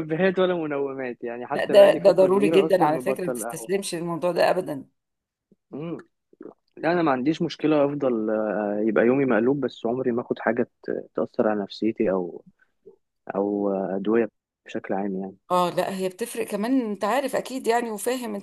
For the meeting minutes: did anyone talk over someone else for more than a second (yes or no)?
yes